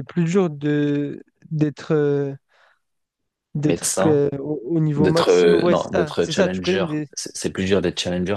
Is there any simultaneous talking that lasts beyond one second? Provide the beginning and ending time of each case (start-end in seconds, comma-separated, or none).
5.0-7.1